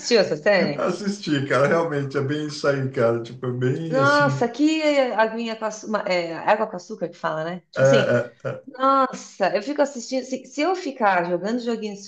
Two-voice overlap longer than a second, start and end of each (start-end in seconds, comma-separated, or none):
none